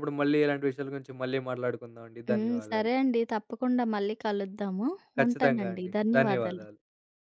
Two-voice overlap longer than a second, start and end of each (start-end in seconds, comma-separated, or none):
5.2-6.6